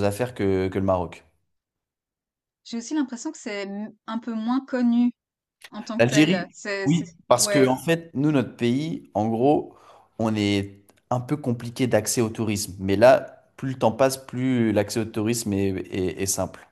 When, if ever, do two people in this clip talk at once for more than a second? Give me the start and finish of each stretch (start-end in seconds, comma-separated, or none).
6.0-7.8